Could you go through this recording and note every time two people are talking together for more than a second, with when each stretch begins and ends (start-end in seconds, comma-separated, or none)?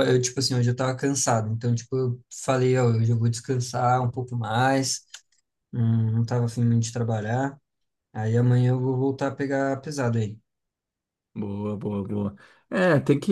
none